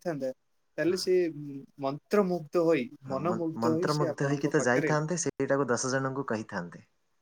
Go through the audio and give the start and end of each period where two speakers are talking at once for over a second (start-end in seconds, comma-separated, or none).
3.1-4.9